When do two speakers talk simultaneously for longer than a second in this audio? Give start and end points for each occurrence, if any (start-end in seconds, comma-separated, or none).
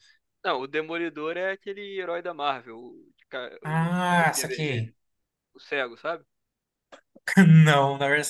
3.6-4.9